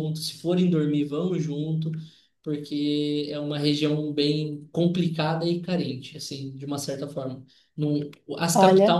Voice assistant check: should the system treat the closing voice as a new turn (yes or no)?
no